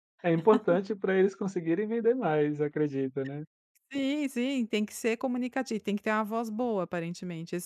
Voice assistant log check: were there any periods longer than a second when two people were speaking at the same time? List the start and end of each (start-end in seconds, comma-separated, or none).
none